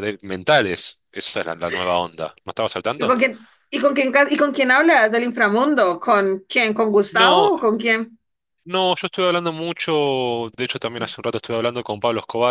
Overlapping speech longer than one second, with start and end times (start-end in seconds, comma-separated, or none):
none